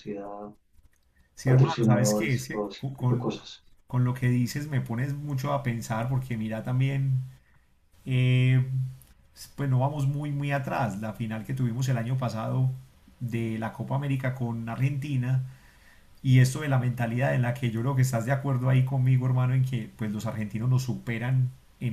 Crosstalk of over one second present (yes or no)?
yes